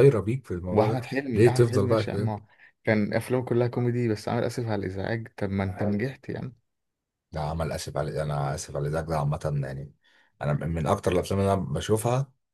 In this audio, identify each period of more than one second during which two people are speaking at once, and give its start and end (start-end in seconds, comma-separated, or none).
0.7-2.3